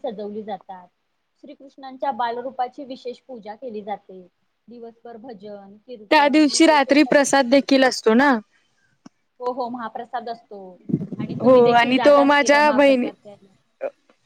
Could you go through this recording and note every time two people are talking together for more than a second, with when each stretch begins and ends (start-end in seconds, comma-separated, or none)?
6.1-7.5